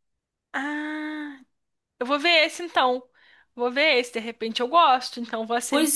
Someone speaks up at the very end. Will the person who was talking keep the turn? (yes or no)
yes